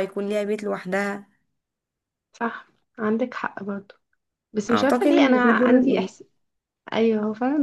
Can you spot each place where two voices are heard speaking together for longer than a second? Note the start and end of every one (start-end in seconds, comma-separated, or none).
4.7-6.1